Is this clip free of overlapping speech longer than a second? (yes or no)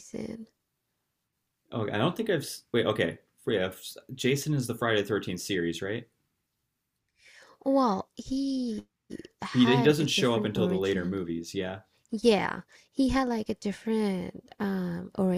no